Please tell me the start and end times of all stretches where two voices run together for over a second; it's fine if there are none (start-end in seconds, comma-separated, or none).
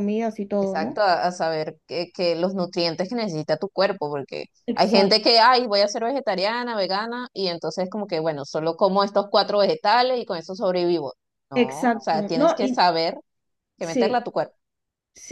11.5-12.8